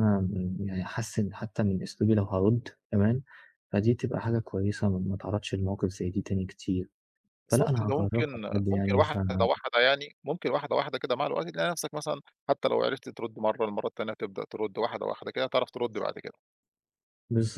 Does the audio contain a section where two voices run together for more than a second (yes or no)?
yes